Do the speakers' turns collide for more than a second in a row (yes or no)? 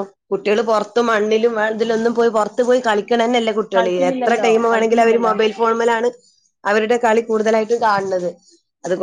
yes